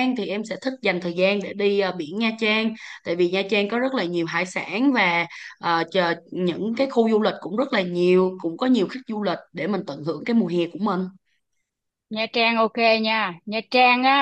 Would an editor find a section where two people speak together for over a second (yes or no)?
no